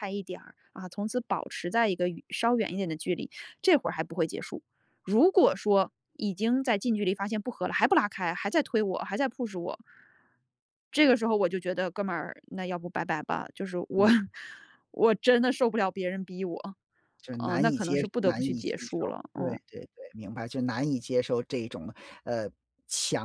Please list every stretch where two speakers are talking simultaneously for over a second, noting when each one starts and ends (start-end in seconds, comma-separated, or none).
17.4-19.6